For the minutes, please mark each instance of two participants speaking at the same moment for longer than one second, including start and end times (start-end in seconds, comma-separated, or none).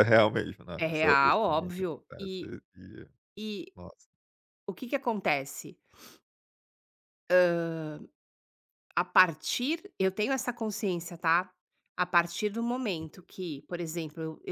0.8-2.5